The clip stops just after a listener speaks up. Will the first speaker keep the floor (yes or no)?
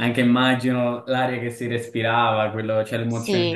yes